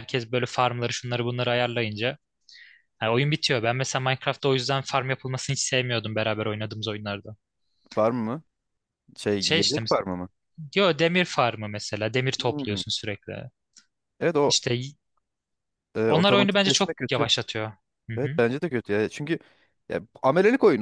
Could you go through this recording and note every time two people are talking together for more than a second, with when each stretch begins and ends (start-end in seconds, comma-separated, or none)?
16.1-17.3